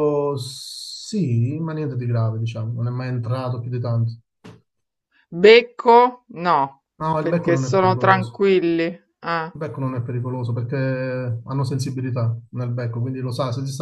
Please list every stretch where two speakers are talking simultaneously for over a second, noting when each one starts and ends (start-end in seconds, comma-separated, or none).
7.2-8.4